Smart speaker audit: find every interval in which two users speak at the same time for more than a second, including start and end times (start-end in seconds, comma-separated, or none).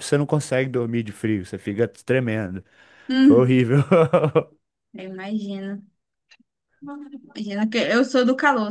none